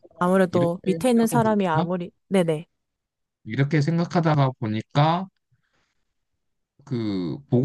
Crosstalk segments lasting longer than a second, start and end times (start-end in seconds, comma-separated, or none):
0.5-1.9